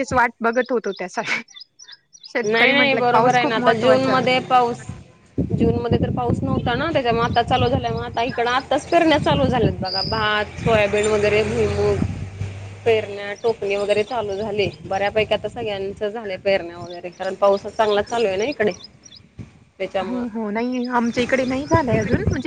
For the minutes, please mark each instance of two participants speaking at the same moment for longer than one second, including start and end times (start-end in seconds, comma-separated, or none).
2.4-4.1